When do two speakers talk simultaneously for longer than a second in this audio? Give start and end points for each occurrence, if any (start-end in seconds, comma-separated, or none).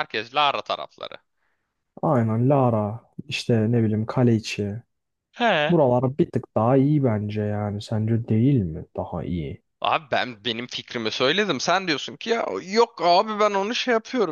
none